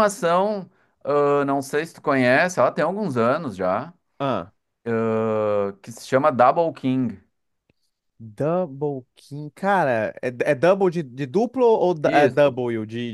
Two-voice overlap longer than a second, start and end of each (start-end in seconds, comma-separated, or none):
none